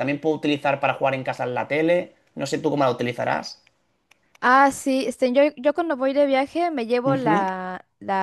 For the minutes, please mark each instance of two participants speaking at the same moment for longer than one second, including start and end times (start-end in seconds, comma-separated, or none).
none